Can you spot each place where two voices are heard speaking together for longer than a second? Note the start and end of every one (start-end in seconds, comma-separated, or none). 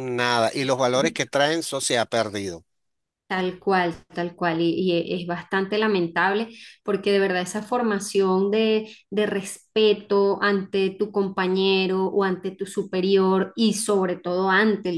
none